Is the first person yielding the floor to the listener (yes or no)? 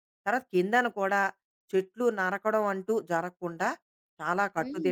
yes